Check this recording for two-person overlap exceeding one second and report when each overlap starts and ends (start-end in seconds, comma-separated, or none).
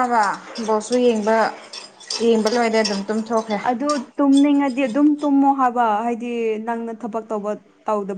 none